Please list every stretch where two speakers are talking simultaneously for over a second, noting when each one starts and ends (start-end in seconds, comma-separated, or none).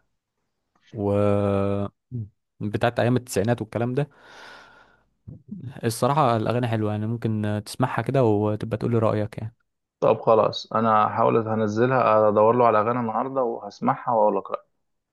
none